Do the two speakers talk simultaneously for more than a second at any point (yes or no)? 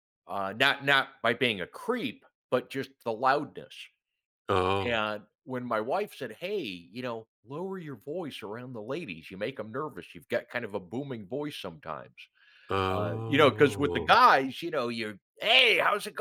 yes